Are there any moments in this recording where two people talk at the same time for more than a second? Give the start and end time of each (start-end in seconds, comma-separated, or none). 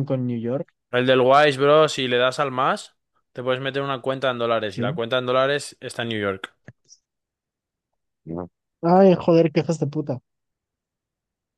none